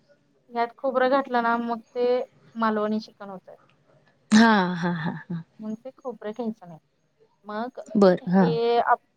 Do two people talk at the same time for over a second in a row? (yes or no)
no